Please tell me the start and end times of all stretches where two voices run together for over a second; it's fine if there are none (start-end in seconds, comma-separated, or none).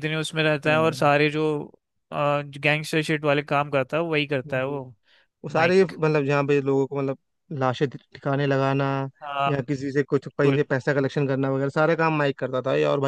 none